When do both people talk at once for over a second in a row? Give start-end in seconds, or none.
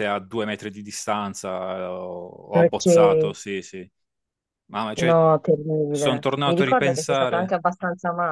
5.9-7.5